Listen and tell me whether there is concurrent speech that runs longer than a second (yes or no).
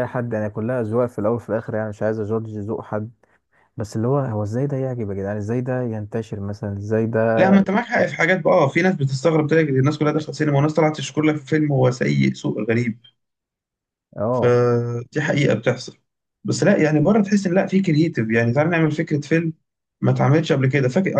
no